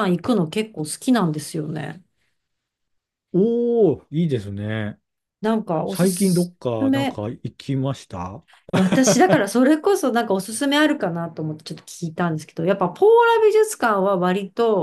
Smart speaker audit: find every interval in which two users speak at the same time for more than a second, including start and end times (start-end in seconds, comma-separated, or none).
5.9-7.2